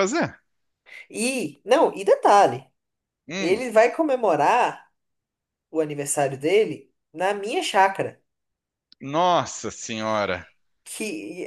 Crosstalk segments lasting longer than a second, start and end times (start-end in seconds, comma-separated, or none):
none